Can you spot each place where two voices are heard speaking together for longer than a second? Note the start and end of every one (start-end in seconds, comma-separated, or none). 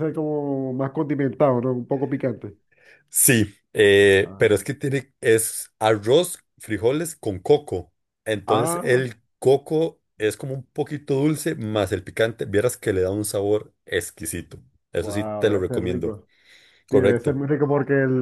15.0-16.2